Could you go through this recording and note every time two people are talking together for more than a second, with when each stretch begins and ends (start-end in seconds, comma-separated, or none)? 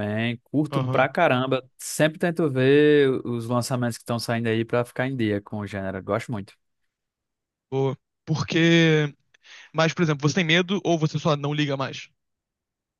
none